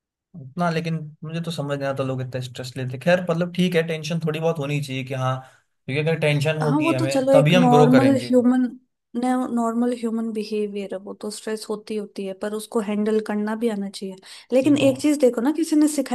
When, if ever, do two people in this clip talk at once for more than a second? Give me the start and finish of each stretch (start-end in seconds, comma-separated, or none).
6.6-8.3